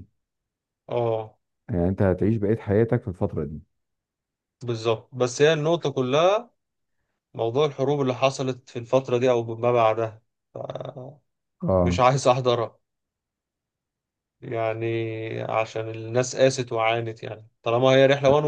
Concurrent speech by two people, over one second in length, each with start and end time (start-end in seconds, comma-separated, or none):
none